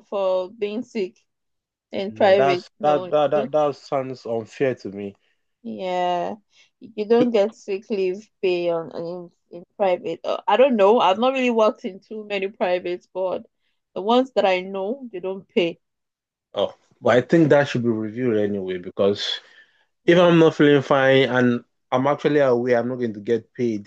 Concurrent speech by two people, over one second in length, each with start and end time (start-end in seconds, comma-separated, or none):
2.1-3.5